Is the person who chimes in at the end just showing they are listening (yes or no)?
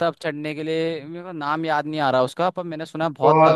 no